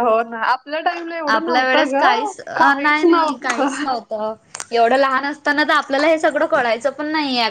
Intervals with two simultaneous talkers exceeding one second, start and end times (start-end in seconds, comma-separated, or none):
1.3-3.6